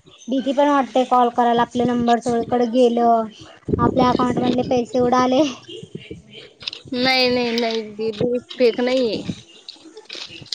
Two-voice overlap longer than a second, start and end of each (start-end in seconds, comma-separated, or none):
none